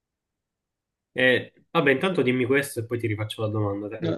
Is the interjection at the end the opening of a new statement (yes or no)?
yes